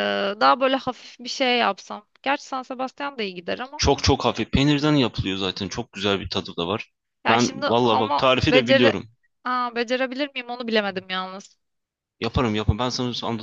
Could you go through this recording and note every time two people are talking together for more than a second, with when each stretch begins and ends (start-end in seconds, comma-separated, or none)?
7.3-8.9